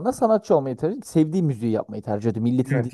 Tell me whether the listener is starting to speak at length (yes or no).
yes